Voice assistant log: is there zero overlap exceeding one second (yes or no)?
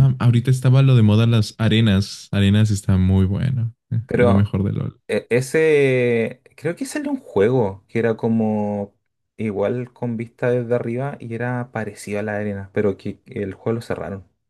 yes